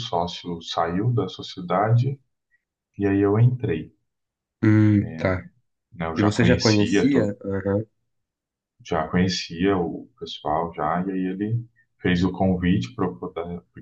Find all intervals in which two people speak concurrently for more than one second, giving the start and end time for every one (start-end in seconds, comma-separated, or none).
6.2-7.4